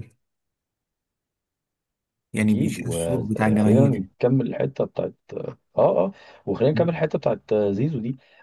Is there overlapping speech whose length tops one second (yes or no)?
yes